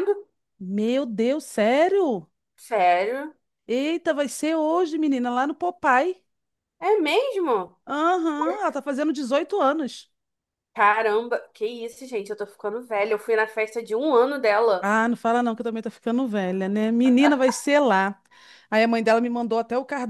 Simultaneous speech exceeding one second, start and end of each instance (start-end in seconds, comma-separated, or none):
none